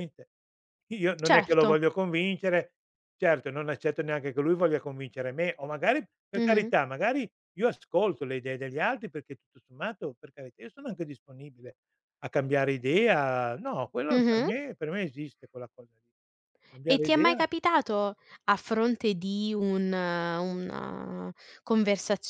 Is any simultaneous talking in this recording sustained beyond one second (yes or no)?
no